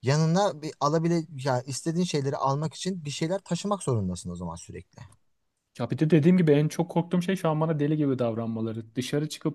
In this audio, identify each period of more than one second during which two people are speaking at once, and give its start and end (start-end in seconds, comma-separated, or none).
none